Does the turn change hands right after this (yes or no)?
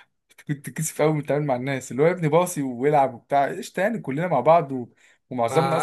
no